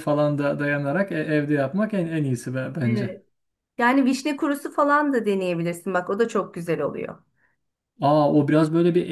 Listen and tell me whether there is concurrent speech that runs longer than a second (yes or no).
no